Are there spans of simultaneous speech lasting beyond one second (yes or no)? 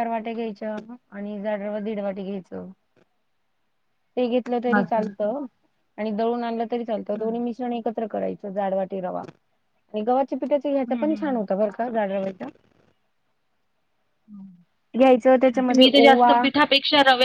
yes